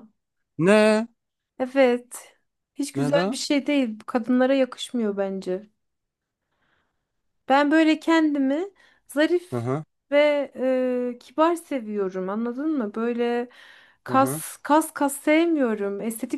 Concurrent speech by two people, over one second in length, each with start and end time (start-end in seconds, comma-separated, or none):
none